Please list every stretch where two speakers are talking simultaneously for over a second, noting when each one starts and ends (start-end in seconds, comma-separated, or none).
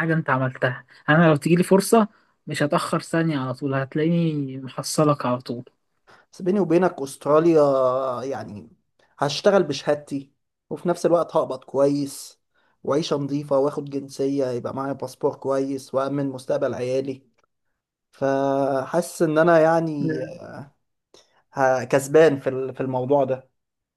none